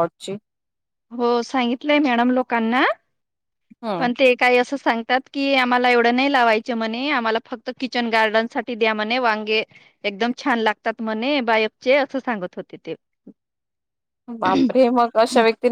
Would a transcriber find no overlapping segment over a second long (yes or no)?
yes